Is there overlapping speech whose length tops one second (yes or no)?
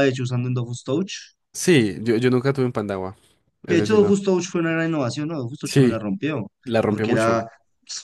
no